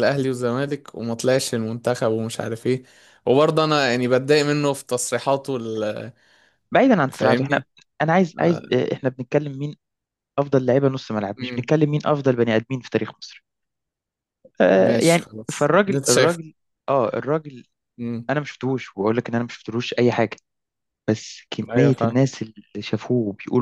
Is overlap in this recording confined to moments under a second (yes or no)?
no